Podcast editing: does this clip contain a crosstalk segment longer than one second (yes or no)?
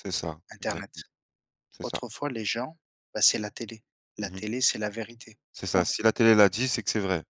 no